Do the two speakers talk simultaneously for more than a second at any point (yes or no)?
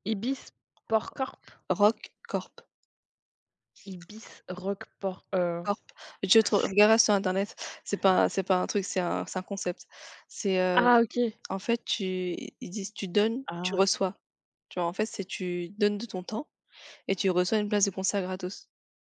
no